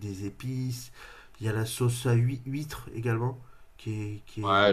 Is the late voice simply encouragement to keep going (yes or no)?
no